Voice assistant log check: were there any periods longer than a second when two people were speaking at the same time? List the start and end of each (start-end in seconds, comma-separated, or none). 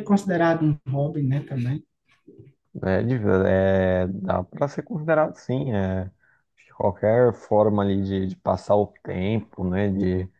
none